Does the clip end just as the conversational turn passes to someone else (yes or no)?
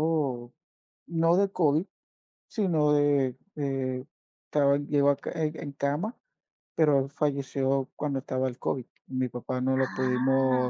no